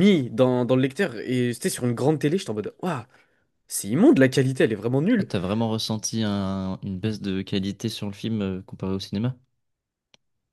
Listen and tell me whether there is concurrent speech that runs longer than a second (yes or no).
no